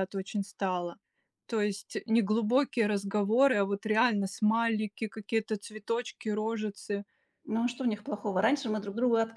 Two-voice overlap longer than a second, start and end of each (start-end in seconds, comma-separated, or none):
none